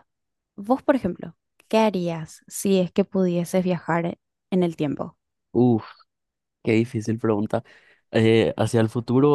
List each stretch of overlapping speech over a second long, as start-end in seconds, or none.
none